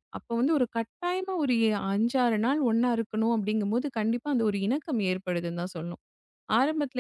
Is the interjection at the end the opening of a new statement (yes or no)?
no